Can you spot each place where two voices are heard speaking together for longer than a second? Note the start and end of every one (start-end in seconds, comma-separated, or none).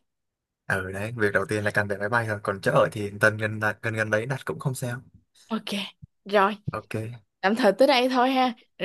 none